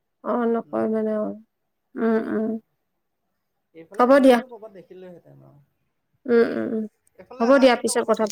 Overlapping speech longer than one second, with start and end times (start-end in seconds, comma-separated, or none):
none